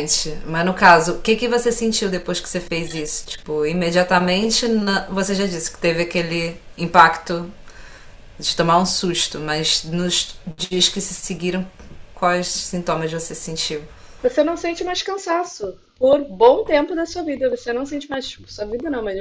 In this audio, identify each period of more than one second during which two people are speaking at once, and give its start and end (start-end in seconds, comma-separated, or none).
none